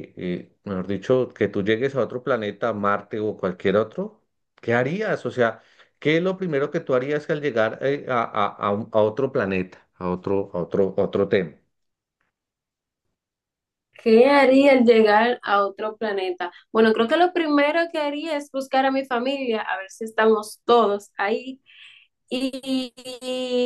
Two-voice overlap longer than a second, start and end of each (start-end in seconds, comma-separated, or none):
none